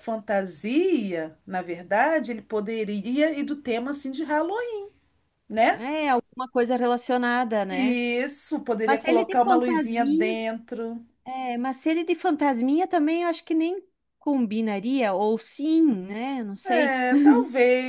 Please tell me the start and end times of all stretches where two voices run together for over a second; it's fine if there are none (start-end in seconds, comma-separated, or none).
8.8-10.3